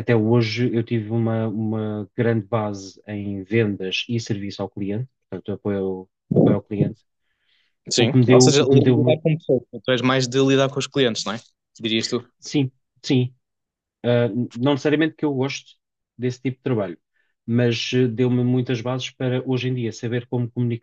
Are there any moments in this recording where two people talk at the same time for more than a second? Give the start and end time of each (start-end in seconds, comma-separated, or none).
8.0-9.2